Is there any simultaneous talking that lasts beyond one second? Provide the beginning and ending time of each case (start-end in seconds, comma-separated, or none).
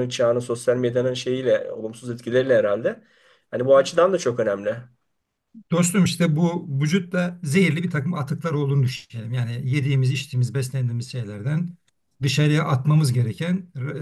none